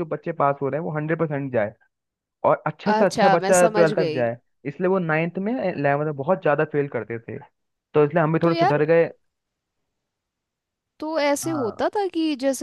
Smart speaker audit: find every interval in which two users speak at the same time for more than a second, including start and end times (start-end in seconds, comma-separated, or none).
2.9-4.2